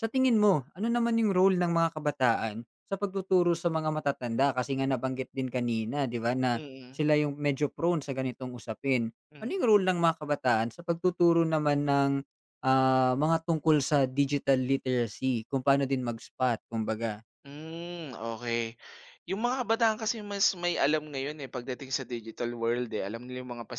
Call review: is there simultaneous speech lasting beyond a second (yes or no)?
no